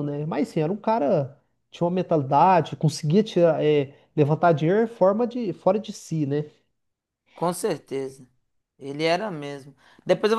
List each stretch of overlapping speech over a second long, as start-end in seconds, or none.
none